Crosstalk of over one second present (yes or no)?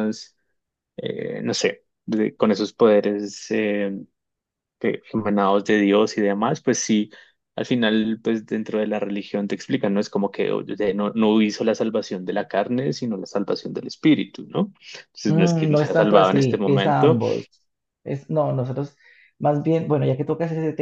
yes